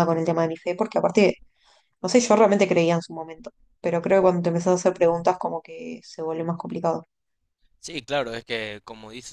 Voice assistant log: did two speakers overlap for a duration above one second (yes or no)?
no